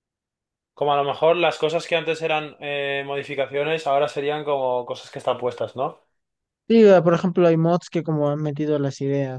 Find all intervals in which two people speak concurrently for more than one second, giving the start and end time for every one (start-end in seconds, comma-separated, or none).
none